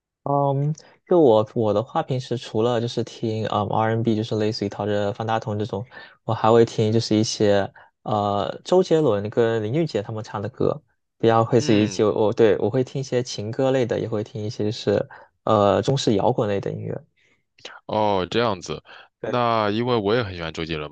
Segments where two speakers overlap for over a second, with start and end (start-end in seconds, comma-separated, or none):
none